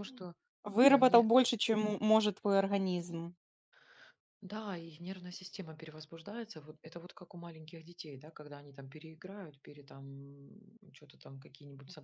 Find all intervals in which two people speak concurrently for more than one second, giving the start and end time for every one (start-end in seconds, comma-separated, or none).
none